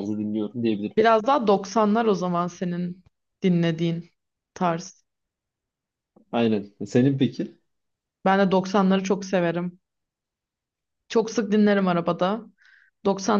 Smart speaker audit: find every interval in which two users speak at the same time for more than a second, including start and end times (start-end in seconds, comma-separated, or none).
none